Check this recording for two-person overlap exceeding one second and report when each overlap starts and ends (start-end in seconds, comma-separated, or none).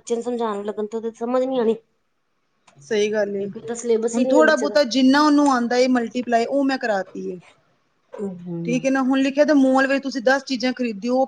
none